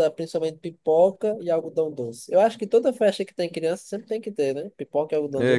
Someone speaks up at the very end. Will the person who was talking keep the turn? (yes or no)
no